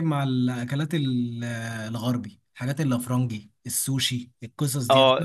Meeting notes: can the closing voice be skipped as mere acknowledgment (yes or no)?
no